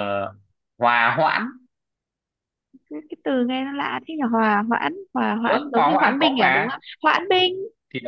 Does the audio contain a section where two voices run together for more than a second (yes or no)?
yes